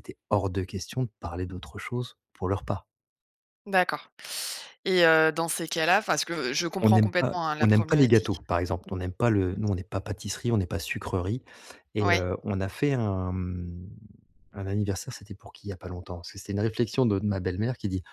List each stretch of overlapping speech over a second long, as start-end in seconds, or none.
6.8-8.4